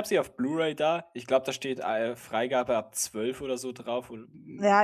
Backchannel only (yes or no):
no